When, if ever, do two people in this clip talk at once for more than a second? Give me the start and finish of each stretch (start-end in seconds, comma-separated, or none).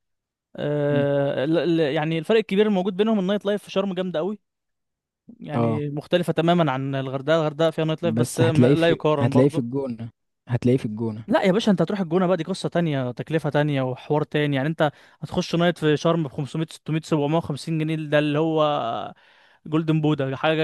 8.0-9.8